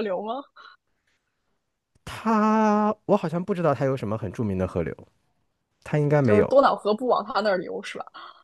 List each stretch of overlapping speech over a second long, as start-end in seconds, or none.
none